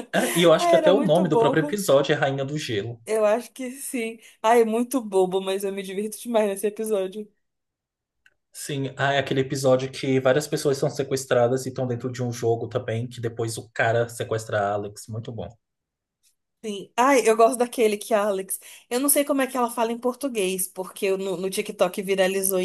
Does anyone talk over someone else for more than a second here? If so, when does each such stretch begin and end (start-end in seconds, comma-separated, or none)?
0.6-1.8